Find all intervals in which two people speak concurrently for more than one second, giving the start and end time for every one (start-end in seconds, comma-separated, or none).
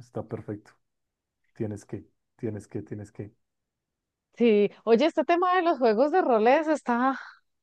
none